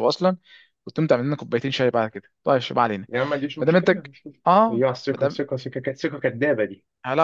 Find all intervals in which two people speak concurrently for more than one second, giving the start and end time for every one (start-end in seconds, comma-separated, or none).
3.6-5.4